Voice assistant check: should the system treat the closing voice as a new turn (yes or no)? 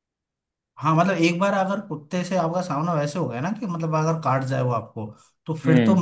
no